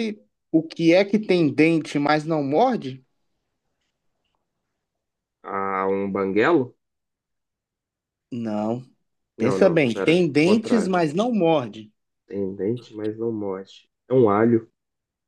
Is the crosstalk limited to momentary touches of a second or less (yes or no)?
no